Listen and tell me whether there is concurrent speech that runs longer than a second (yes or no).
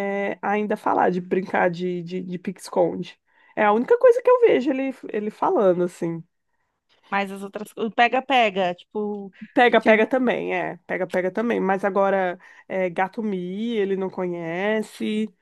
no